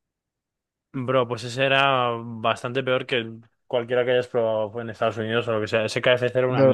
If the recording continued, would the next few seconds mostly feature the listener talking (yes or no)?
yes